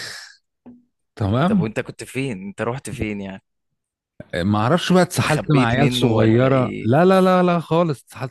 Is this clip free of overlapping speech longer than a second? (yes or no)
no